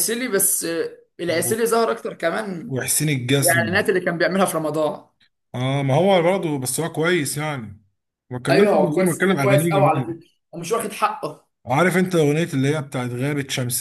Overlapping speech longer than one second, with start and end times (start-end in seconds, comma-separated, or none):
8.5-10.2